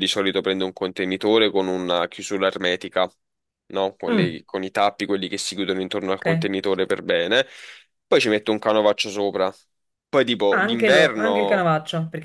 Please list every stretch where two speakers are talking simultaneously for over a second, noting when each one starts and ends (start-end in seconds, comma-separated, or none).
10.5-11.7